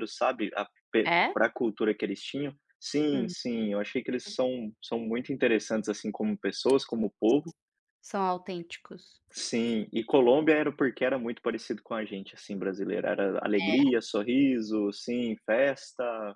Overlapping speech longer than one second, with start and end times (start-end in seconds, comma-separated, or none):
none